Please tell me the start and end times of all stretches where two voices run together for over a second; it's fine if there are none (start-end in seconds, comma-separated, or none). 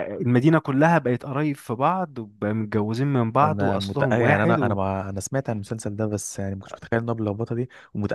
3.4-4.8